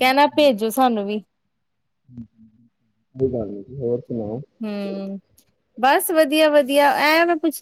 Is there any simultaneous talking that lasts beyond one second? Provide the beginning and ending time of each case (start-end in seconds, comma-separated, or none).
none